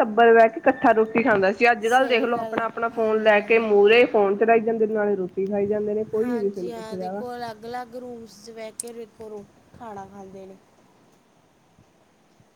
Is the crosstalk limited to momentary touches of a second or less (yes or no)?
no